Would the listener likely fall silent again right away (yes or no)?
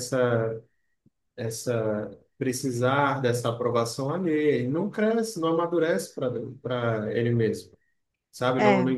yes